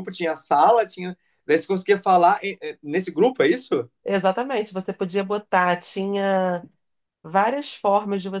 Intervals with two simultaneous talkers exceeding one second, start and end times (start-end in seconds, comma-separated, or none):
none